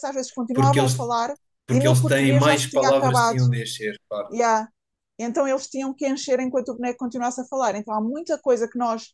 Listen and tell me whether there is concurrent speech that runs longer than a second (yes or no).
yes